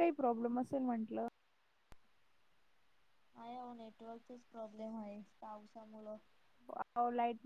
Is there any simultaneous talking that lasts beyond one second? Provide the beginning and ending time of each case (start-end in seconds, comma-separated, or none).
none